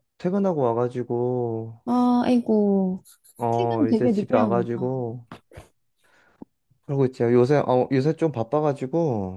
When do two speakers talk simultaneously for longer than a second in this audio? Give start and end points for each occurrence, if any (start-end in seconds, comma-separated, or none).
3.5-4.8